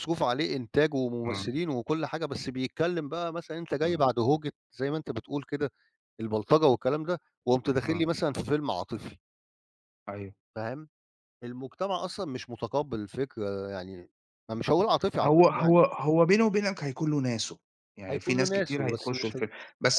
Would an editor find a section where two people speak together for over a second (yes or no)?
yes